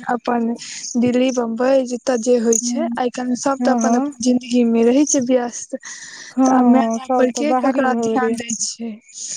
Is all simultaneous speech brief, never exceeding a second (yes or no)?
no